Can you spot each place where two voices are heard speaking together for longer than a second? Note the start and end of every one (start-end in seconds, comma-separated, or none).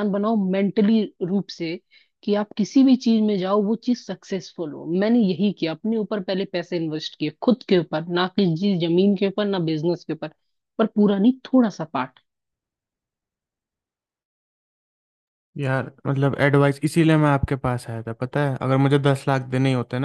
none